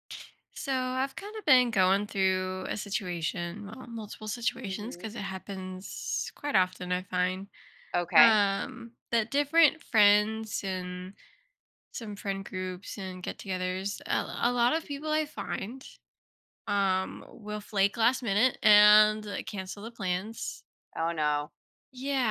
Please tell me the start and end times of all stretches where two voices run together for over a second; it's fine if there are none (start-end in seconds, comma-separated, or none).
none